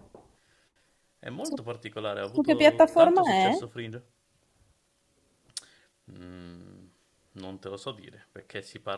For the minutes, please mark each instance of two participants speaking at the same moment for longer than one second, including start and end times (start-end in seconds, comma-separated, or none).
2.2-3.6